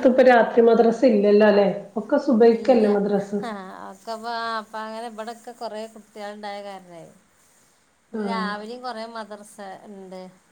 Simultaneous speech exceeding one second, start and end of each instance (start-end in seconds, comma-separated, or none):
none